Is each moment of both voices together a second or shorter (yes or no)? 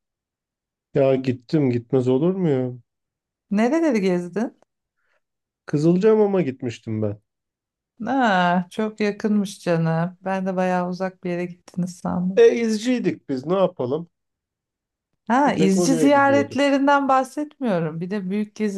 no